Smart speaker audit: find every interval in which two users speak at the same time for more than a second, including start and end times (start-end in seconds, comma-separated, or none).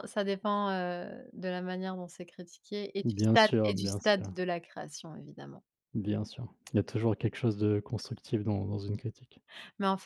3.0-4.3